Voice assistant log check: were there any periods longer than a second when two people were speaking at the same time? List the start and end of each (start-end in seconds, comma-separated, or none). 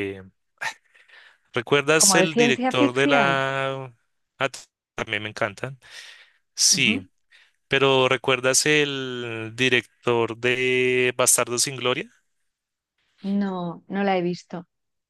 2.0-3.3